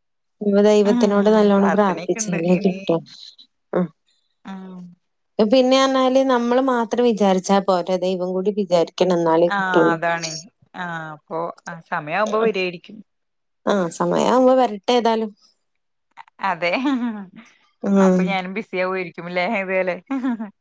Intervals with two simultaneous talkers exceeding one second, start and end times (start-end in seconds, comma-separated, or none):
0.9-2.4